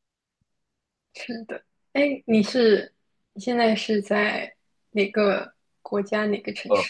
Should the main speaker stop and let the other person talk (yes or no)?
yes